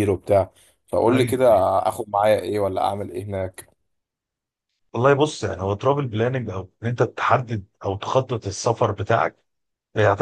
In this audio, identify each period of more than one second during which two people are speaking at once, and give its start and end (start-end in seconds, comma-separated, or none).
none